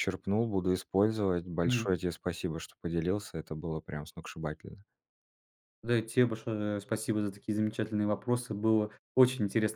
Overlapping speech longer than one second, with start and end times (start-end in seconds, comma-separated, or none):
none